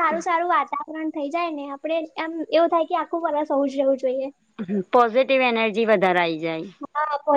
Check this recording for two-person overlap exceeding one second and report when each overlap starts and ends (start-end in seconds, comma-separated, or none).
none